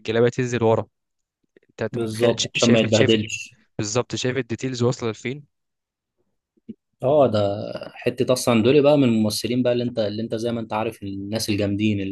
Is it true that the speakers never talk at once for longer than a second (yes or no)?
no